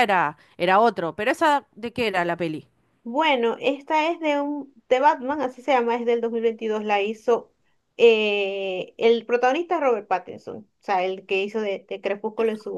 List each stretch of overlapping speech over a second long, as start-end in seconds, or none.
none